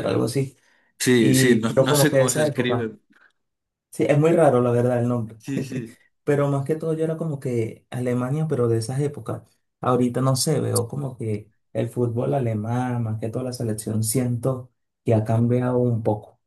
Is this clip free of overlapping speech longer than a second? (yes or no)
no